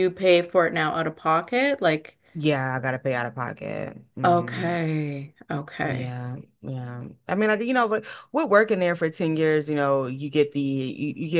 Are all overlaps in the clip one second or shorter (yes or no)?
yes